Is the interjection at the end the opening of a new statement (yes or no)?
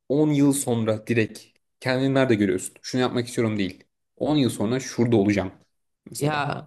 yes